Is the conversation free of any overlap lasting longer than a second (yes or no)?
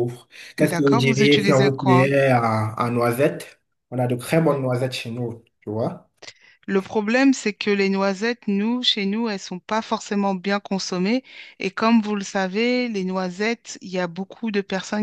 no